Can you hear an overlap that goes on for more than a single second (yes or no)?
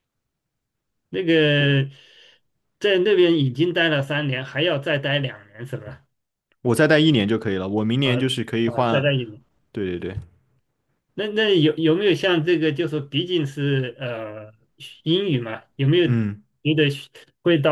no